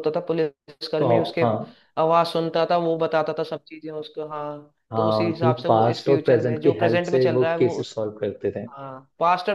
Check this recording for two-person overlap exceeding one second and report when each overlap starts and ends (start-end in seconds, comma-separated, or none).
4.9-7.9